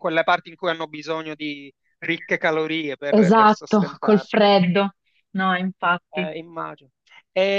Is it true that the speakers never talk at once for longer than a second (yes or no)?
no